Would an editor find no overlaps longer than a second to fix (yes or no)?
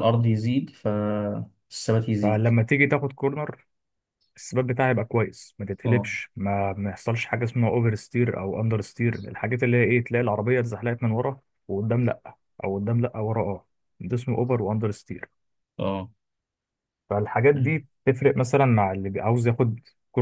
yes